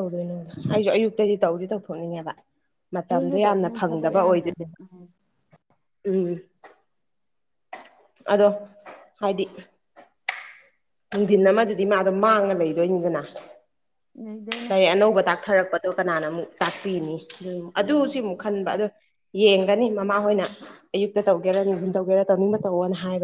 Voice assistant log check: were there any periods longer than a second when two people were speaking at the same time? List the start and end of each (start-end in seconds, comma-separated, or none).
3.1-4.8